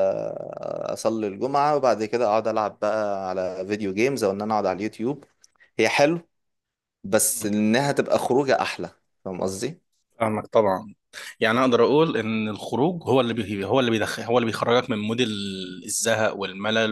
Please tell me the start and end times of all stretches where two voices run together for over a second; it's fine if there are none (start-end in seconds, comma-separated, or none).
none